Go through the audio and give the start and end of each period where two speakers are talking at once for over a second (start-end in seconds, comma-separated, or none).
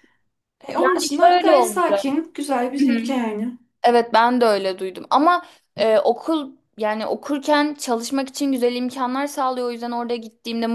0.8-2.2